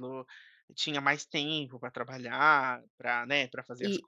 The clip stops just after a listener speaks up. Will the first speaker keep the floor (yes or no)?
yes